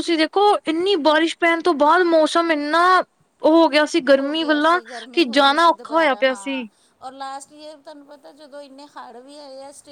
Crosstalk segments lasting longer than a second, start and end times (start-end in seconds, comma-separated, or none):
4.2-6.6